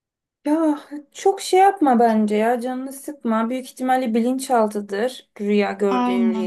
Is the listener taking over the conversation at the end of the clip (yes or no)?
yes